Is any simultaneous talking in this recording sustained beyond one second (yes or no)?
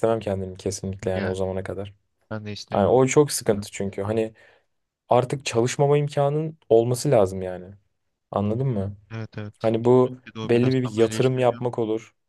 yes